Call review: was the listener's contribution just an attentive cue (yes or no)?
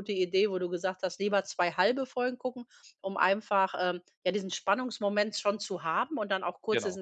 yes